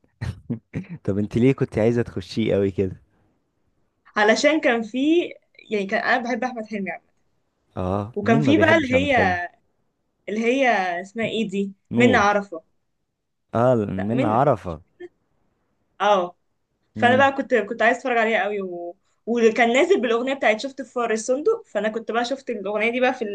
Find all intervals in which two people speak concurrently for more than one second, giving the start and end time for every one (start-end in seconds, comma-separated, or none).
8.2-9.3